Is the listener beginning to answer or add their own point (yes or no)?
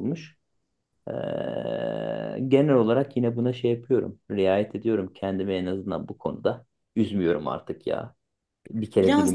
yes